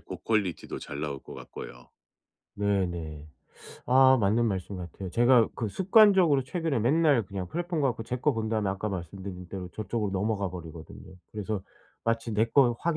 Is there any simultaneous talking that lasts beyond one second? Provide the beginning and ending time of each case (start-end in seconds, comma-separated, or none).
none